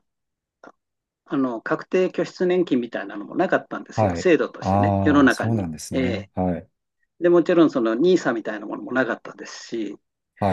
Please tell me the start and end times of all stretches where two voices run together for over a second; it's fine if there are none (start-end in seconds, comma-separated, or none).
3.9-6.3